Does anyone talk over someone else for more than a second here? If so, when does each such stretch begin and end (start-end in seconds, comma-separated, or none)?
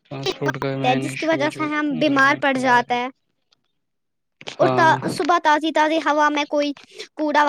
0.9-3.0